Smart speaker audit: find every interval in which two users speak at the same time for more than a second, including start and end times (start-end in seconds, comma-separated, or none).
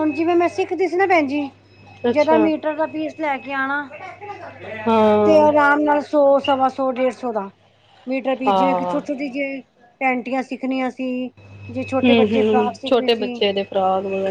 12.0-13.4